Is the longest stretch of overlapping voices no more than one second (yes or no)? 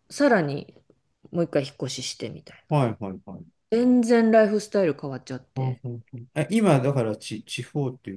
yes